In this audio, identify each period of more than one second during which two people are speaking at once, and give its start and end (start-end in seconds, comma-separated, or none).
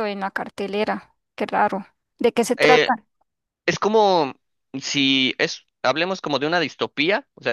none